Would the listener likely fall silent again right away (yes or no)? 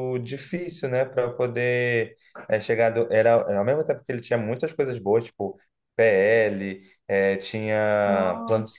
yes